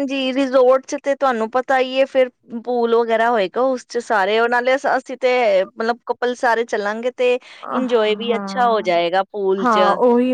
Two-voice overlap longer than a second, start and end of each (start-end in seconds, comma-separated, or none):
7.7-8.9